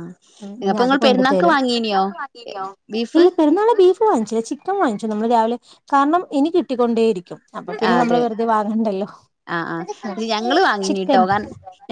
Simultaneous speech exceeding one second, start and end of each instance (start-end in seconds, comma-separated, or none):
none